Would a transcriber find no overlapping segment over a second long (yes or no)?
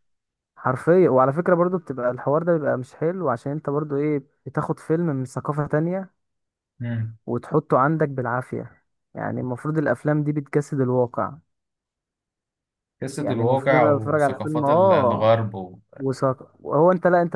no